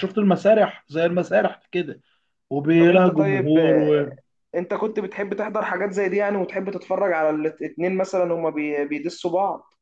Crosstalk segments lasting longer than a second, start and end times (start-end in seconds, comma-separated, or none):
2.8-4.1